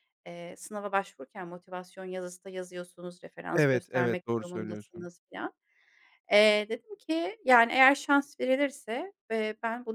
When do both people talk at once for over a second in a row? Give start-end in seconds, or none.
3.5-5.1